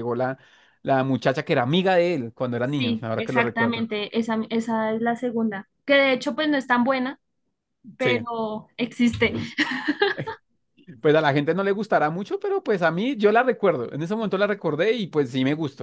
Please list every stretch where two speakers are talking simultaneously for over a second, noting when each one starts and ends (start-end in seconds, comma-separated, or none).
2.6-3.9